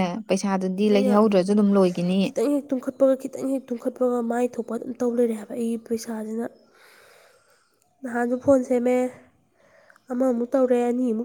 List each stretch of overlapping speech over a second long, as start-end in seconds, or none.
none